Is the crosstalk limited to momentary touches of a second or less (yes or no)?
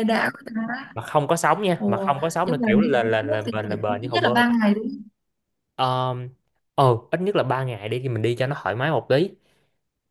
no